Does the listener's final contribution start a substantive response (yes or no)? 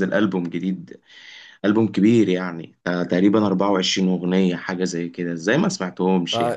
yes